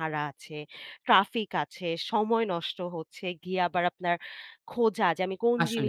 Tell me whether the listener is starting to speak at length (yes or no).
yes